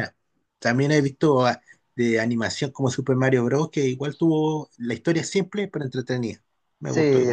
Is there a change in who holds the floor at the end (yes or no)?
yes